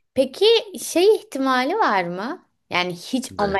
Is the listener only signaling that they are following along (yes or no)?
yes